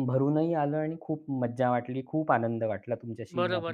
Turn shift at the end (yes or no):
yes